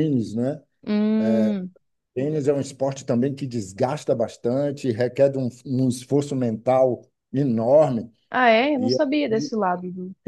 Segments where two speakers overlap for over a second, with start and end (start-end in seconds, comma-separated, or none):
none